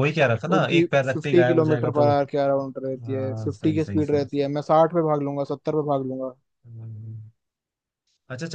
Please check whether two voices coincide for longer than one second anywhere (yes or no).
yes